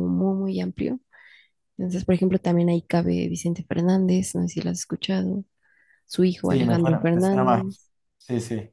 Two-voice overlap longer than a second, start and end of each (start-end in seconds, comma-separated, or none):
6.4-7.8